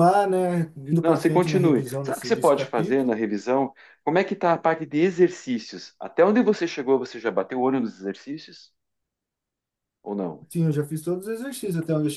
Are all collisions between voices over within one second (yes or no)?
no